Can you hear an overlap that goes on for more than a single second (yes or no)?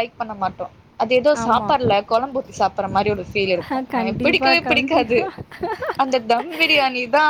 yes